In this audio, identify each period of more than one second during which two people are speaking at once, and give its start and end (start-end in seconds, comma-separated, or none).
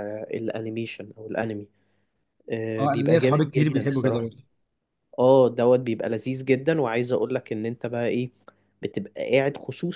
2.8-4.3